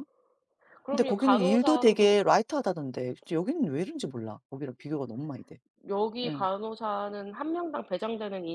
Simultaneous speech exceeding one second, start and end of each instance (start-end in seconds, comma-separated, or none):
0.9-2.2